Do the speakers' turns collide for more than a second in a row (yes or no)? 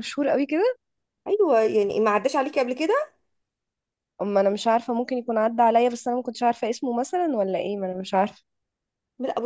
no